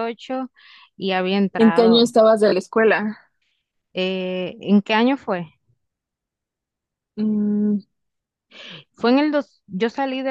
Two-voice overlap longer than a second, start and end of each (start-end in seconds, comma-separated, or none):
none